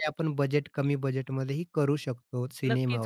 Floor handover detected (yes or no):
yes